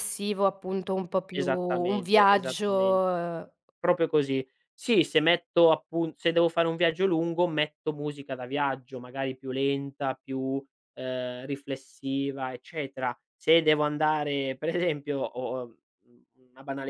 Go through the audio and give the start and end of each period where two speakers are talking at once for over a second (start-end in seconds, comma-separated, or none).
1.3-3.0